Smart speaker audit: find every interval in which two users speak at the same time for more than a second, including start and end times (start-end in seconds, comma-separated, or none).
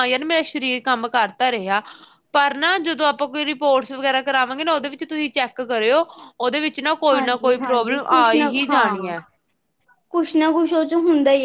7.1-9.2